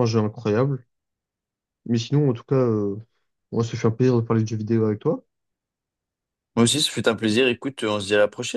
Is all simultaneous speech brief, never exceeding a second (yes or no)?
yes